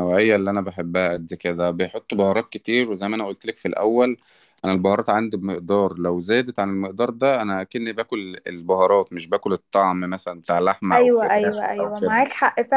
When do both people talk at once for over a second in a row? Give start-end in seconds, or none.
10.9-12.2